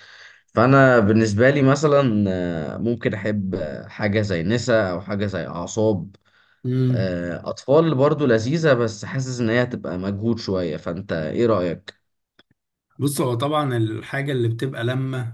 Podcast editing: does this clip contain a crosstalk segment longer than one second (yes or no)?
no